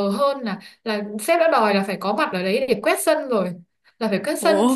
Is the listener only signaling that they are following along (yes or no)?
yes